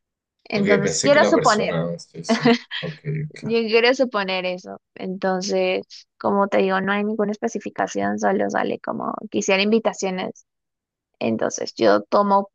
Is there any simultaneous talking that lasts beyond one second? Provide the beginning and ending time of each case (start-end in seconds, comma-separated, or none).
0.5-1.8